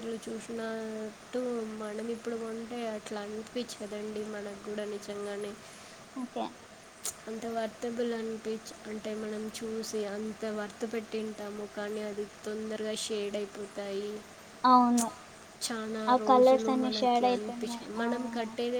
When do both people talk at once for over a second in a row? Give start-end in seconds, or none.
16.1-18.0